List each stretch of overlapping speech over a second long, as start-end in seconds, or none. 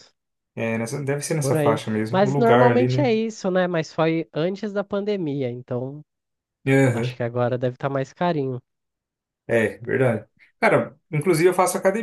1.4-3.1